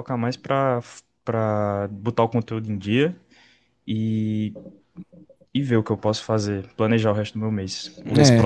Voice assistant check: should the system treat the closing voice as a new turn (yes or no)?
yes